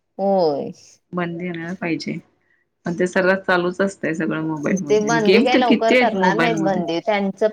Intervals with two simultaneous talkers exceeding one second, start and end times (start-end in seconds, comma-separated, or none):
4.9-6.8